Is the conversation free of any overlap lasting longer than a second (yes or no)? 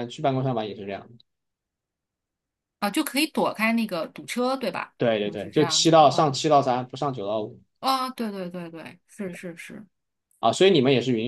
no